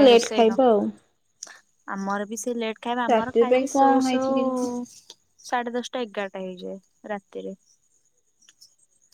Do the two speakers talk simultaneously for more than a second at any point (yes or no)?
yes